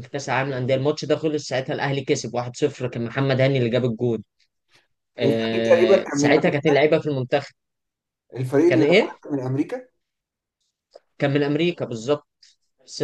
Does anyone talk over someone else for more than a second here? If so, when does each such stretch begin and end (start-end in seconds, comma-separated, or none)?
5.2-6.7